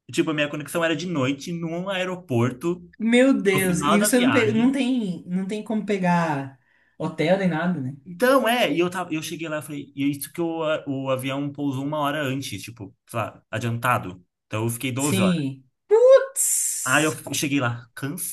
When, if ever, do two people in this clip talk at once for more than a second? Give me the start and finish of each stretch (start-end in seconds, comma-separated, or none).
3.5-4.7